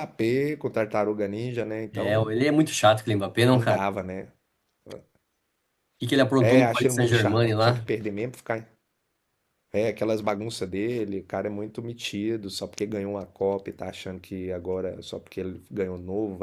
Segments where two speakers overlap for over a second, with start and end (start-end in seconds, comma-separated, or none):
6.4-7.8